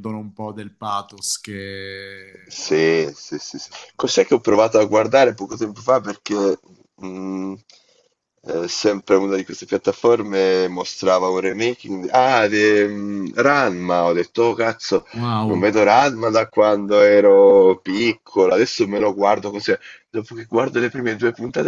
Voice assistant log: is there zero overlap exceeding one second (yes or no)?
yes